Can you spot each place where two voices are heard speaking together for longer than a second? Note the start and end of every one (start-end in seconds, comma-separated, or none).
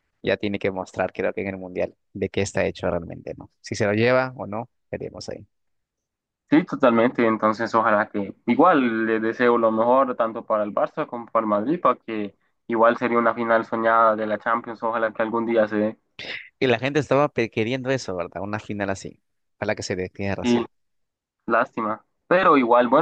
none